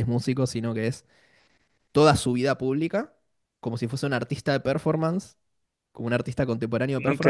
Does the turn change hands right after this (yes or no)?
yes